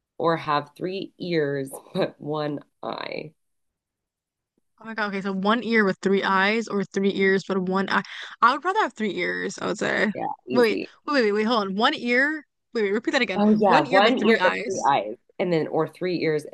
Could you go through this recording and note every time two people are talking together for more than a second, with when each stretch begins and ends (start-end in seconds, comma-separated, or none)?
13.3-14.9